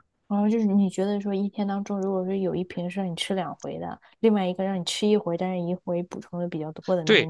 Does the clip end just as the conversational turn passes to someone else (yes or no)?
yes